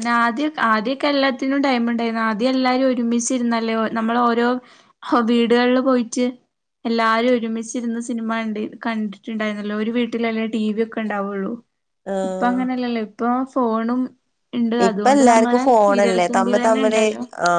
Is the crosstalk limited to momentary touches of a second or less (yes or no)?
no